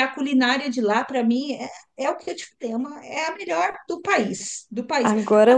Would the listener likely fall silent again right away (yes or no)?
no